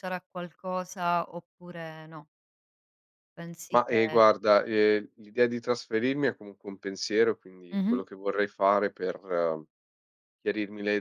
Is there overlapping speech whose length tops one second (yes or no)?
no